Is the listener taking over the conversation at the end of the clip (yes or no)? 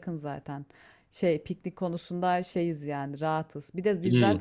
no